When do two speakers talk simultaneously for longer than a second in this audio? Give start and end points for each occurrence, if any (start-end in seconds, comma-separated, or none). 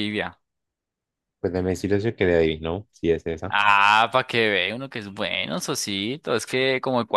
none